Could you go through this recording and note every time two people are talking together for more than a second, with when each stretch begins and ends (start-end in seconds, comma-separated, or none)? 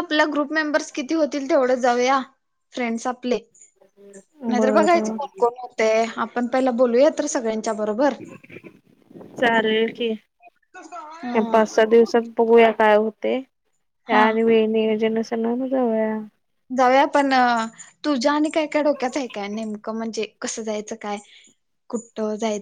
none